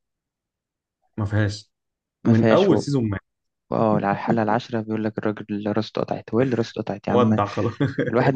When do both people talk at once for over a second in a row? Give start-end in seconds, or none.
none